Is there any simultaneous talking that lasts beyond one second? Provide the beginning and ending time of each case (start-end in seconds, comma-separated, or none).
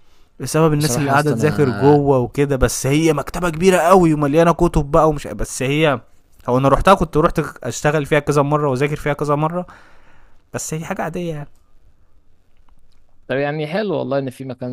0.8-2.0